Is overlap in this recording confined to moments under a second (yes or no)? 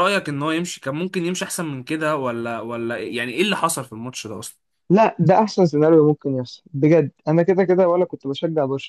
yes